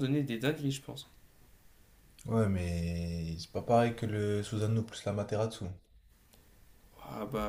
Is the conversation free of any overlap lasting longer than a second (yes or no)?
yes